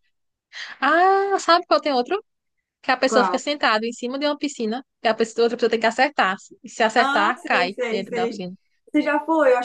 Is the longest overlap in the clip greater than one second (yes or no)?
yes